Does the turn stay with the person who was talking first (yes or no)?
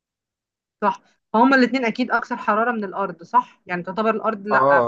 no